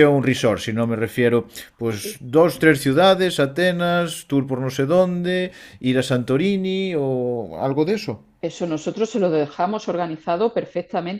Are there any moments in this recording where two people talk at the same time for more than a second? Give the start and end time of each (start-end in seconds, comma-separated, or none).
none